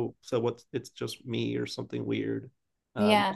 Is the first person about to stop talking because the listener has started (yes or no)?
no